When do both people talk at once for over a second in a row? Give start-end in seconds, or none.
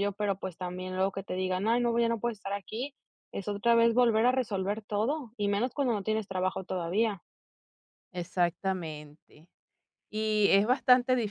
none